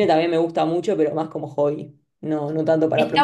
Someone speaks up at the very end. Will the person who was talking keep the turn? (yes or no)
no